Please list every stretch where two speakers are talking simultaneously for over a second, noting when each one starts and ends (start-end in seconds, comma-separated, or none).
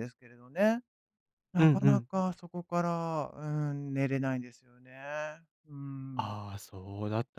none